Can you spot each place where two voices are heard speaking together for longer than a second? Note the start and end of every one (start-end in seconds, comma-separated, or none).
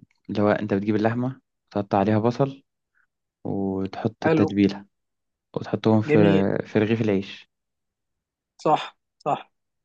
none